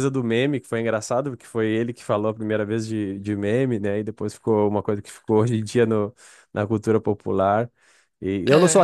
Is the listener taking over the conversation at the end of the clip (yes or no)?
no